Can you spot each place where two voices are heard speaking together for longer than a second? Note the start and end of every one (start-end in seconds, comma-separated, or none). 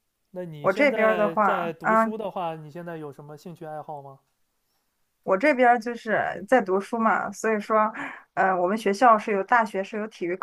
0.6-2.1